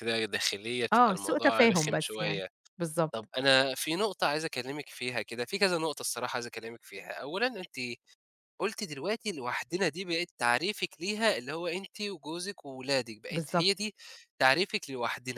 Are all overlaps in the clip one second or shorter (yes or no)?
no